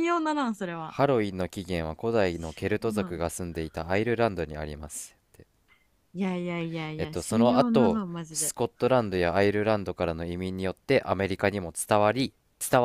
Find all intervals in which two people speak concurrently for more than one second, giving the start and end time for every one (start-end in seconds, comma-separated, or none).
7.0-8.5